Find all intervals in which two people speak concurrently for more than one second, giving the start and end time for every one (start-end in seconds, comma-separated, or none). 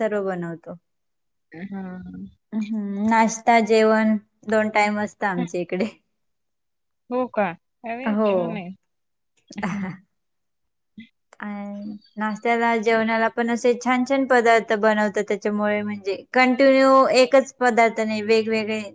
none